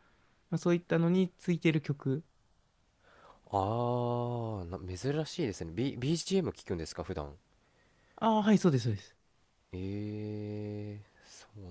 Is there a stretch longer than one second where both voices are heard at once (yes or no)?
no